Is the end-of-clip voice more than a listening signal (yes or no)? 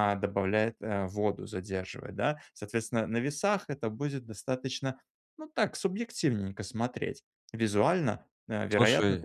no